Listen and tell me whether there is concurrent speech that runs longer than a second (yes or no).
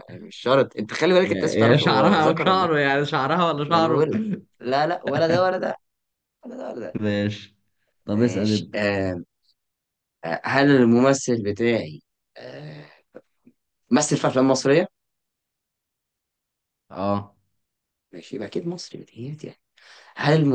yes